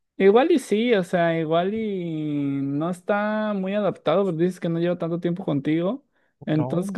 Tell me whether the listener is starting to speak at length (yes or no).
no